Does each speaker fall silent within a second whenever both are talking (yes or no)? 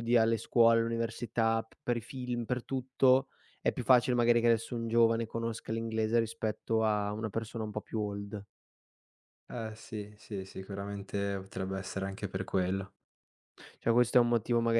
yes